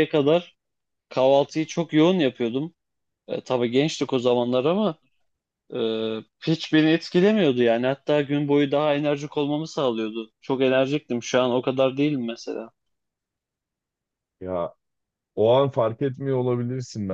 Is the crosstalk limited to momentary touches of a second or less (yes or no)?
yes